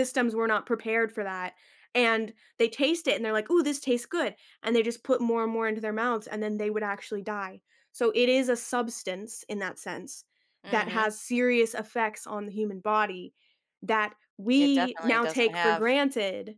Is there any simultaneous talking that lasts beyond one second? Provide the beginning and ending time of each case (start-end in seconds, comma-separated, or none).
14.6-15.9